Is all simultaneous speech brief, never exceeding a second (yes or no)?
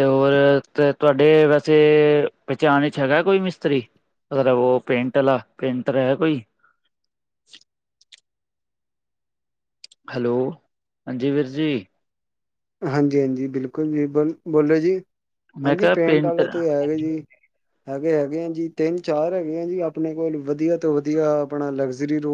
no